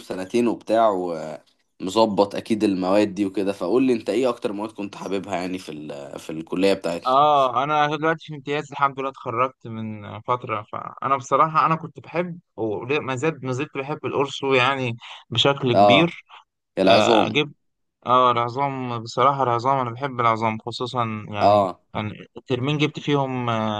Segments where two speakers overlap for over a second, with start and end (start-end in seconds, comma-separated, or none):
none